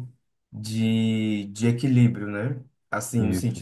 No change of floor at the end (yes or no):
yes